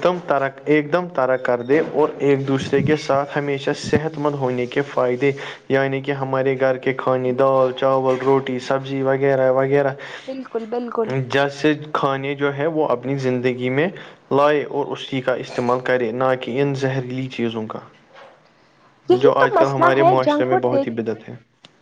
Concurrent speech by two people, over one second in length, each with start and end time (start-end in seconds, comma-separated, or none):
19.1-20.9